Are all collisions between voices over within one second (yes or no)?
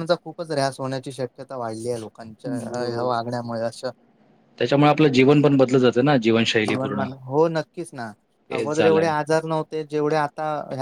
yes